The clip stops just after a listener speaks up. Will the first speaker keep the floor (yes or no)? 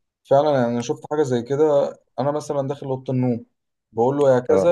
yes